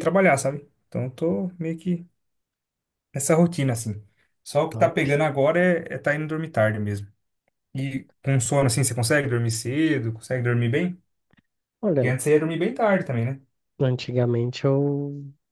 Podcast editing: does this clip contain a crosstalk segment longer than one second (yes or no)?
no